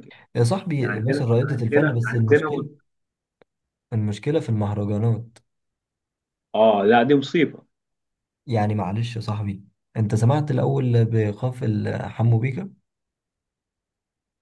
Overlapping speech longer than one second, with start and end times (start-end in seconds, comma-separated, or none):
0.7-2.7